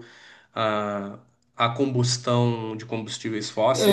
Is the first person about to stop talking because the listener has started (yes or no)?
yes